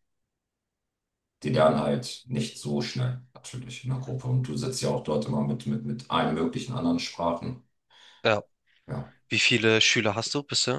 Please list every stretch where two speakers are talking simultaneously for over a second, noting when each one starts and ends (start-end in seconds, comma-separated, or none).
none